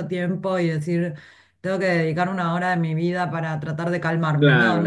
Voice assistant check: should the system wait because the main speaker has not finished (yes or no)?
no